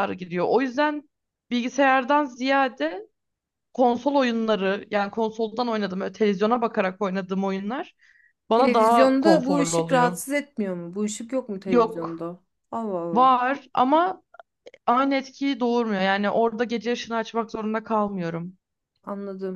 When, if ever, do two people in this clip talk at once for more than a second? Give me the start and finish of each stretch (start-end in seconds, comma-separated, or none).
8.5-10.2